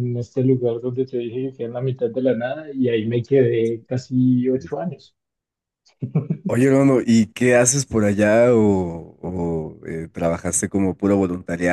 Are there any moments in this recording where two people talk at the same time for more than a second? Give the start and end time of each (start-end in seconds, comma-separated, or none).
none